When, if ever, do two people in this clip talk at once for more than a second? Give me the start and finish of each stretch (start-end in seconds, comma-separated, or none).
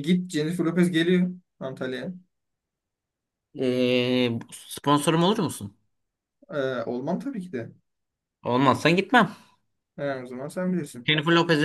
none